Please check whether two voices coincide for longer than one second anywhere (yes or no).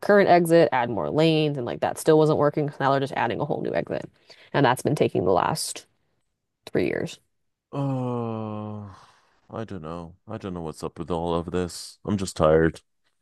no